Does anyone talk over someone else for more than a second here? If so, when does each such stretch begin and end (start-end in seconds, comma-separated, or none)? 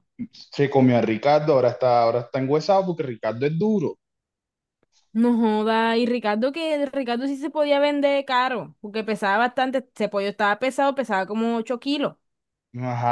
none